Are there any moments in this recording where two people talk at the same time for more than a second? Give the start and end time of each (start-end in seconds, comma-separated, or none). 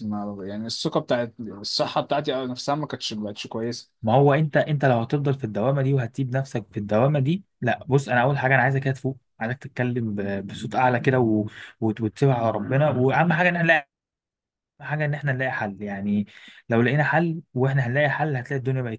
none